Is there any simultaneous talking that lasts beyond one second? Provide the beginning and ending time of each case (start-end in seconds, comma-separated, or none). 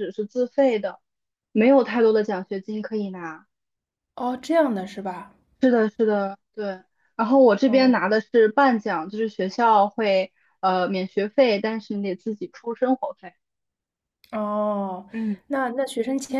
none